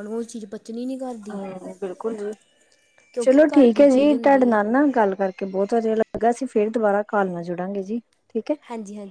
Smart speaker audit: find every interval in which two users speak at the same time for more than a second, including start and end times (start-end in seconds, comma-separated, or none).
3.2-4.6